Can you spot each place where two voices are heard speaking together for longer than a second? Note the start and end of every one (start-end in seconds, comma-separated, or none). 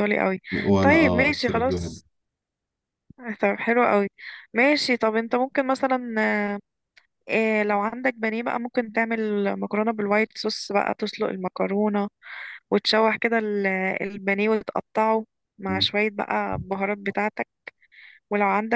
0.8-2.0